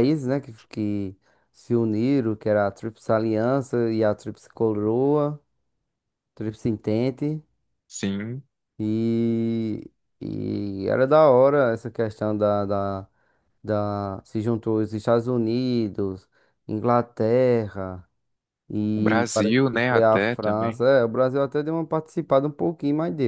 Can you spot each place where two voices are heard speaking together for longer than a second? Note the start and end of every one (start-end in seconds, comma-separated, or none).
18.9-20.8